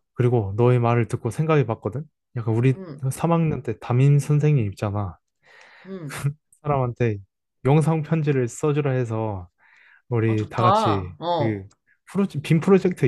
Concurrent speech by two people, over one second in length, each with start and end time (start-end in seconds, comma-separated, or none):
10.3-11.7